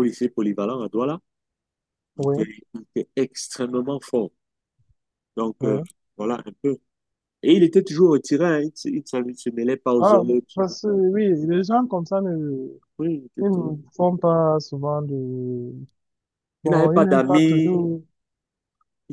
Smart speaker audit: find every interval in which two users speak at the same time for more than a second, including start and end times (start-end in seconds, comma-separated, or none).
16.7-17.9